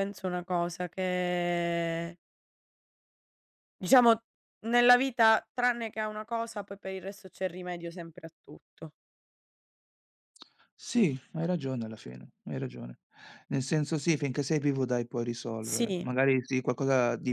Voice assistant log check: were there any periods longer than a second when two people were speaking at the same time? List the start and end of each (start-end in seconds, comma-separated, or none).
none